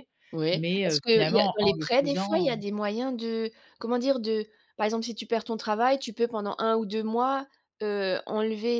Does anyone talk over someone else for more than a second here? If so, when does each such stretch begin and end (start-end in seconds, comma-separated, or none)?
0.5-2.5